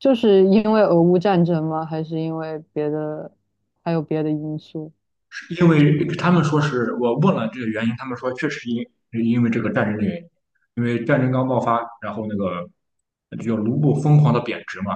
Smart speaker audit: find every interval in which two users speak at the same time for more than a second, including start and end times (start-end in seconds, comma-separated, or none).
none